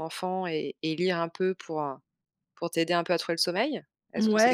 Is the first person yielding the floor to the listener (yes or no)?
yes